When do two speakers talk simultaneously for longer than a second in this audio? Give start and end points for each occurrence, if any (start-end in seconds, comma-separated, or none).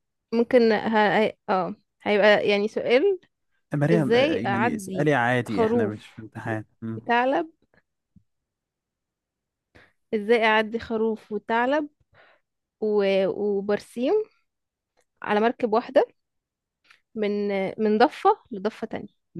3.9-6.0